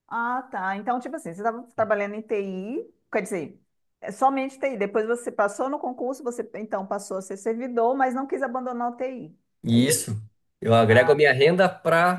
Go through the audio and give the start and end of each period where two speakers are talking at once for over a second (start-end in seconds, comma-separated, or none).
none